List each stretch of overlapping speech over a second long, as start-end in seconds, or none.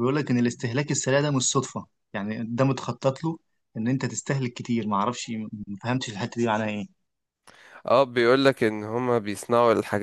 none